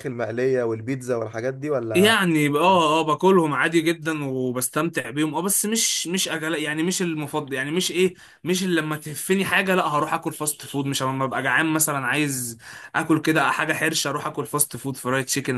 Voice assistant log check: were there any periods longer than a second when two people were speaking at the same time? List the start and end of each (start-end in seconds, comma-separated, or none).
none